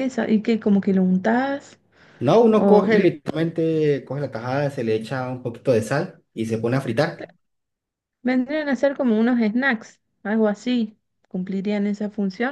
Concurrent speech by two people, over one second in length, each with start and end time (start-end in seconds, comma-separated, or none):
none